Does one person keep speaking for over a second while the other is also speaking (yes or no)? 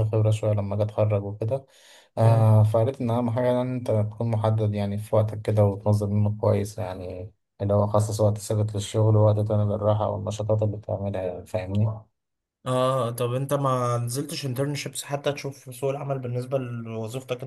no